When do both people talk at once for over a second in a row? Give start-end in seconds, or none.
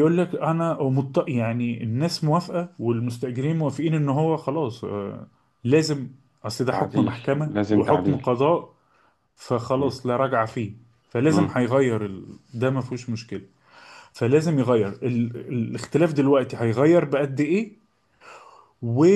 6.7-8.3